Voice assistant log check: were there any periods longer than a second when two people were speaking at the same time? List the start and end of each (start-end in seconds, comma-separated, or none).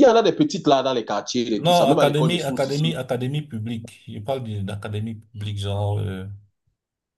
1.6-2.9